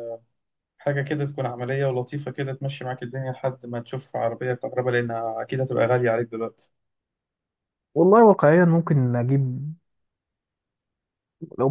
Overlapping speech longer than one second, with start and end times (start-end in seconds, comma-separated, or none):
none